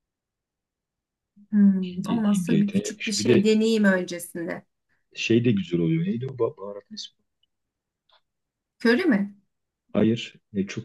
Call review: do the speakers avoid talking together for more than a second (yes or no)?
no